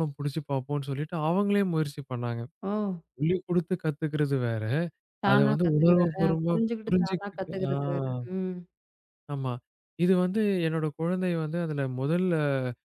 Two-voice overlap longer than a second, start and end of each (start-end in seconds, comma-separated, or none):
5.3-7.7